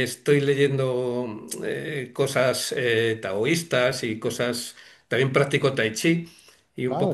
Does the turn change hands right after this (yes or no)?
no